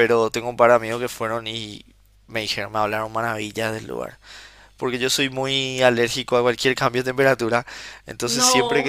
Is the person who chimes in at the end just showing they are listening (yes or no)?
yes